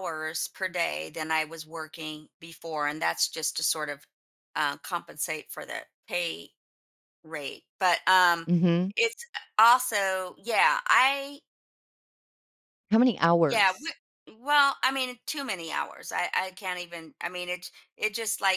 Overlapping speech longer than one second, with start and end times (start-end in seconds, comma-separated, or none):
none